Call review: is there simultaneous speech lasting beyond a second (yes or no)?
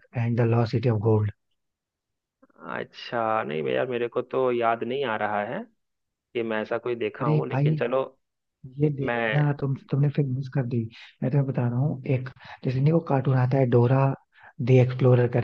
no